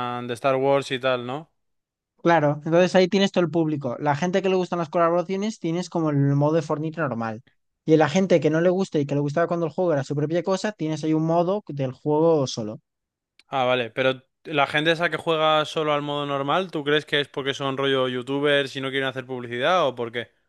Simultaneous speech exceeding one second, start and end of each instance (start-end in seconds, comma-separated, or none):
none